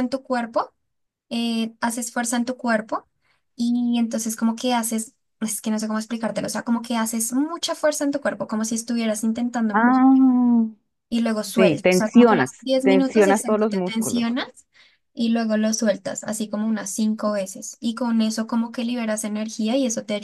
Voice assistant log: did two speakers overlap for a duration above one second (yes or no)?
yes